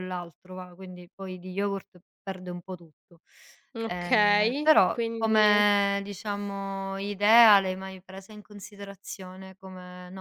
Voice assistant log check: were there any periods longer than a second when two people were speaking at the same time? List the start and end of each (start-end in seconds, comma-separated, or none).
3.9-5.6